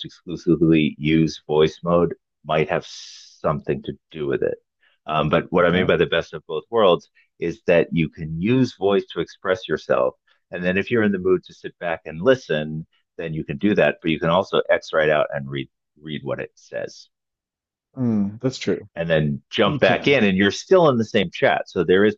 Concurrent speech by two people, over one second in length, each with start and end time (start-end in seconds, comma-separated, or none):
none